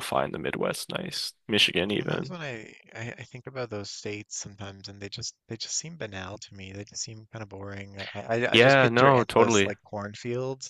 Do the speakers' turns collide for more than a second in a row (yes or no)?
yes